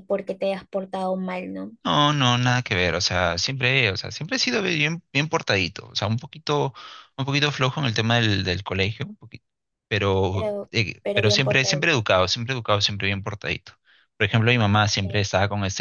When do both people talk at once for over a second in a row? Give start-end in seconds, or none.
10.3-12.0